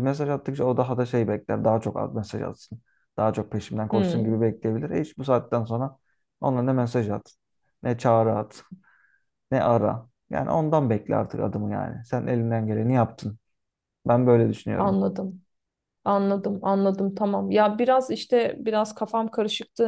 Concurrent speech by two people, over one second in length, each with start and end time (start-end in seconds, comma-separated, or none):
none